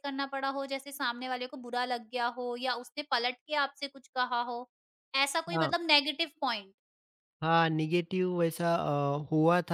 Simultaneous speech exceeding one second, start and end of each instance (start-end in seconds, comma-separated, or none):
none